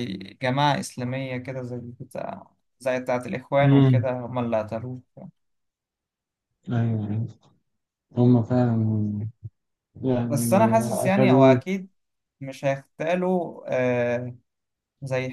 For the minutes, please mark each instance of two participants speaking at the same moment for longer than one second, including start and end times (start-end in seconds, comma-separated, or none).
10.3-11.6